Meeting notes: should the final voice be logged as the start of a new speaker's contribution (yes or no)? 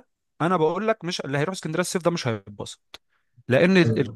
no